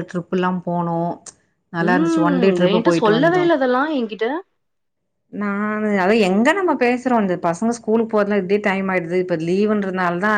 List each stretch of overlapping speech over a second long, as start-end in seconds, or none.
1.9-3.5